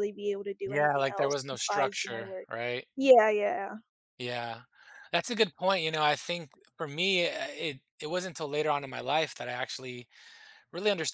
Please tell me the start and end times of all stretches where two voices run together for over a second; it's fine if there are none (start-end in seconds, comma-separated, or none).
0.6-2.5